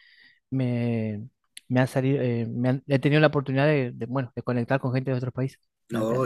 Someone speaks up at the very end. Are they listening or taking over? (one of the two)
taking over